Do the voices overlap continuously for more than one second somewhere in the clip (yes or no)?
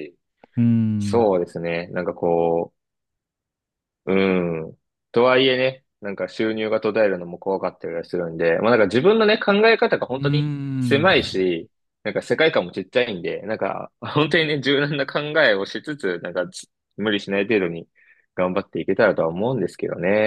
yes